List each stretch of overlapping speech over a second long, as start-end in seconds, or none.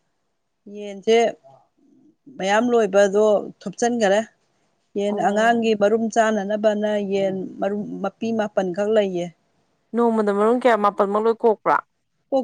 none